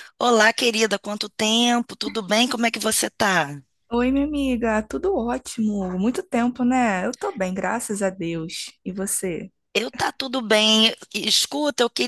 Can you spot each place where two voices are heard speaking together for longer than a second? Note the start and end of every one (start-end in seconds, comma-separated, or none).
none